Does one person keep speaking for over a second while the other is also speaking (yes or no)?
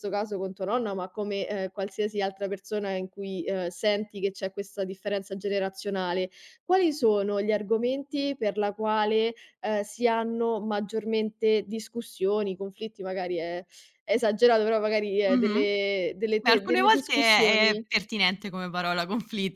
yes